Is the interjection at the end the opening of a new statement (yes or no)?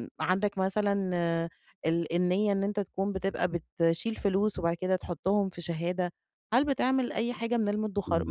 no